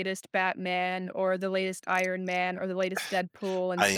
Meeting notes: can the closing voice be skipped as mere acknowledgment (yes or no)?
no